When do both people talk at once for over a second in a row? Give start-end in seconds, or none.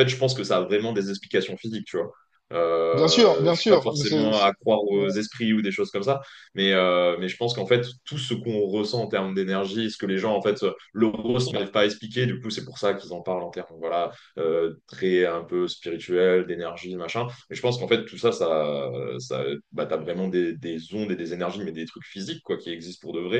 2.9-4.5